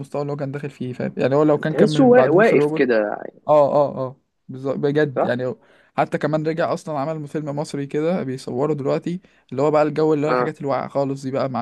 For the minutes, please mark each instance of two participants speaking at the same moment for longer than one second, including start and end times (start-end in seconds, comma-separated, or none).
1.7-3.0